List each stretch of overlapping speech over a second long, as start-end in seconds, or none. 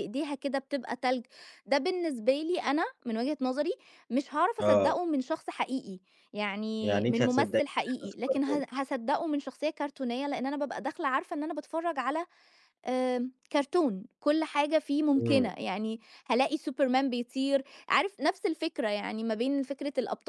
6.8-8.6